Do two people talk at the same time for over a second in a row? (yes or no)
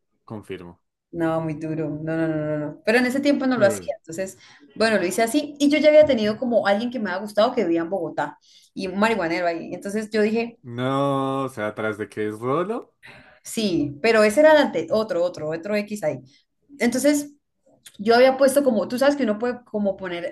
no